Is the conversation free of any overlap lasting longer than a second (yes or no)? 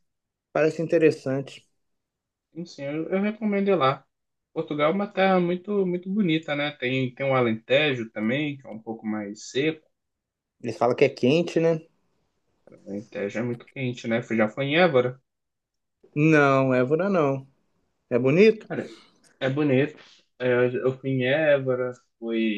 yes